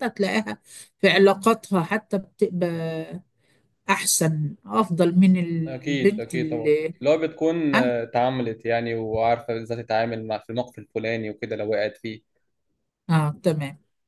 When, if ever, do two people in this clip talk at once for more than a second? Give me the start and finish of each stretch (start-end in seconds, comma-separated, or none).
5.7-6.9